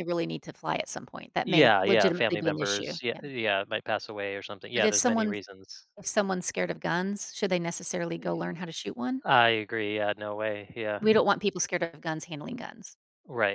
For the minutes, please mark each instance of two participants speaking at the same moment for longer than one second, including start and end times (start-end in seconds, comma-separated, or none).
1.4-3.2